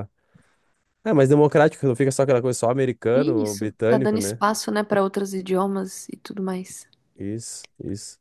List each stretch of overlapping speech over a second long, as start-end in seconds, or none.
3.1-4.4